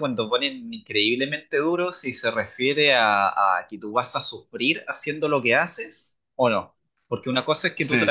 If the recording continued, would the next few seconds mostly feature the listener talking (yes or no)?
no